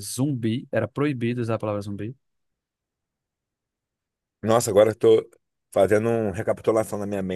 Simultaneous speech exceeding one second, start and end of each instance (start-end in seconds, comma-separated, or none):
none